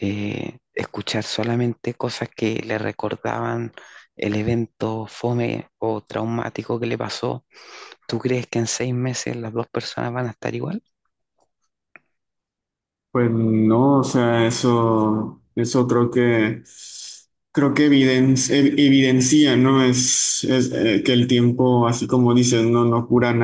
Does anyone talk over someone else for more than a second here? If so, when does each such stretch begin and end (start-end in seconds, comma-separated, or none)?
none